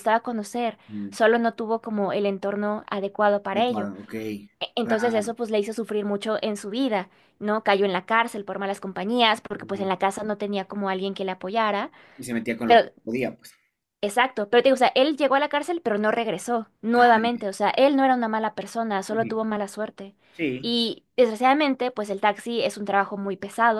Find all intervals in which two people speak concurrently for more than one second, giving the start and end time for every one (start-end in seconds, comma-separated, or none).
none